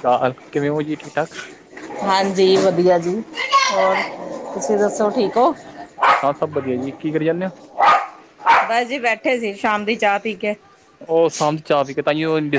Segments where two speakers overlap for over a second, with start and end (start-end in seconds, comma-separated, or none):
none